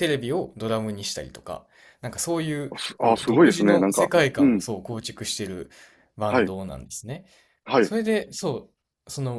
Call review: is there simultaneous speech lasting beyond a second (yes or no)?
yes